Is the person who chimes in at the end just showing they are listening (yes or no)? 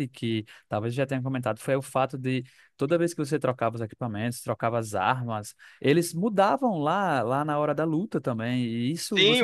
no